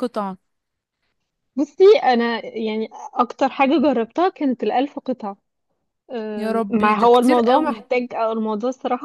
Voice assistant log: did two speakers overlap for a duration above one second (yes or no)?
yes